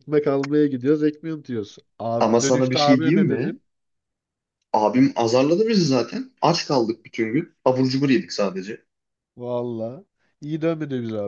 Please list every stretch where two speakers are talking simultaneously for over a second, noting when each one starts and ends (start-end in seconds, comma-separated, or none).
2.2-3.6